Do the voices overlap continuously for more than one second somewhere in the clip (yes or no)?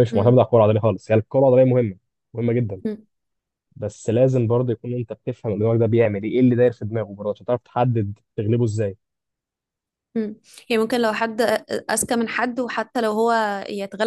no